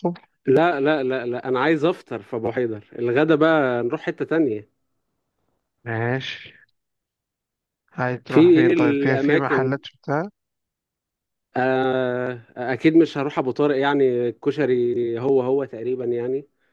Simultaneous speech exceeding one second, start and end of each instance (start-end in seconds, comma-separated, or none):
8.3-9.8